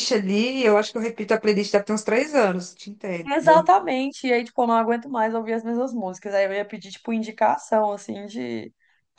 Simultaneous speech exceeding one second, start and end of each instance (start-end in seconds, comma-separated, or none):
none